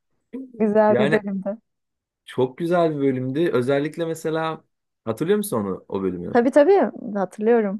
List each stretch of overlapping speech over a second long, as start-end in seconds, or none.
none